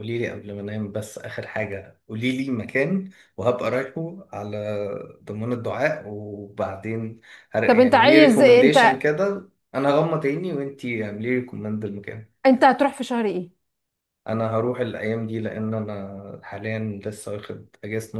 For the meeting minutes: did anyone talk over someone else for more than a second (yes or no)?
yes